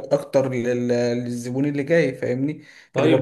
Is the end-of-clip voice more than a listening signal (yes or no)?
yes